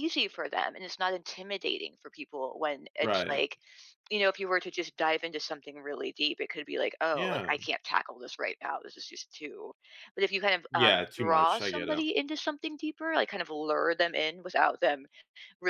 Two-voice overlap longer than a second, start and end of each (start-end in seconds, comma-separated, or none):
10.7-12.0